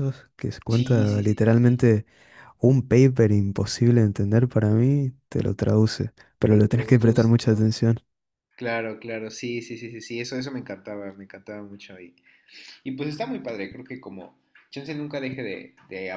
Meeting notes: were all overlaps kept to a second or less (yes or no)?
no